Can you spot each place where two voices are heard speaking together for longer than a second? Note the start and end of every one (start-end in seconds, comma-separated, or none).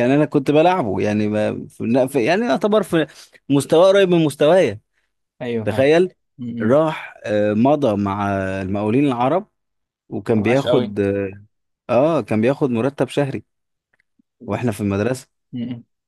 none